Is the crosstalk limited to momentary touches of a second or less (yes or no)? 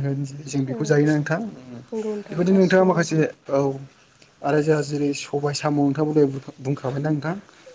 no